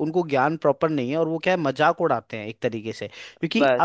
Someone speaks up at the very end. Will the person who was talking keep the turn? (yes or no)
yes